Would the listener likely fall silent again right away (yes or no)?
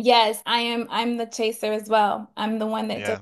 yes